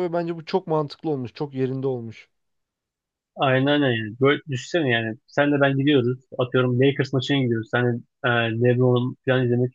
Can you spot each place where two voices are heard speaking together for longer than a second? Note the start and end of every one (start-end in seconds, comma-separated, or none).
none